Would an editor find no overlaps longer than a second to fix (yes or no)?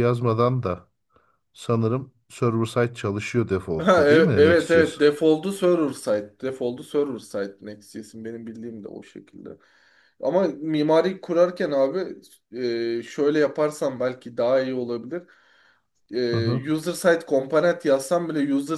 no